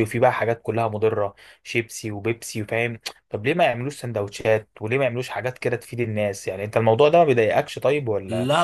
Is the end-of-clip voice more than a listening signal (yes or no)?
yes